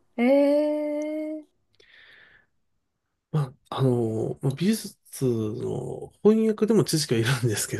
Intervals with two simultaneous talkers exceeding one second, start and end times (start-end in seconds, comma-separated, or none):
none